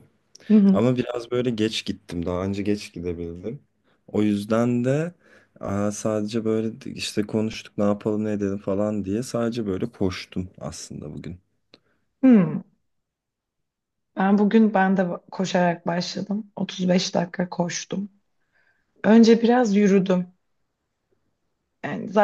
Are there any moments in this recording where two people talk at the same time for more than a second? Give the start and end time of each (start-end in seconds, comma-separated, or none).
none